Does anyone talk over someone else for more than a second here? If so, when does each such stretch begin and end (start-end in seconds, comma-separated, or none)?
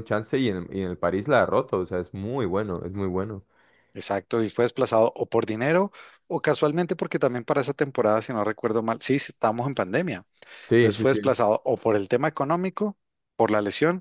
none